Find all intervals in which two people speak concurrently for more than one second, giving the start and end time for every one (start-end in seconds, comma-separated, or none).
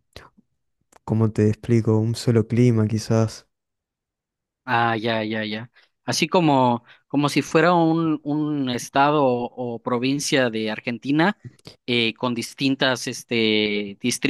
none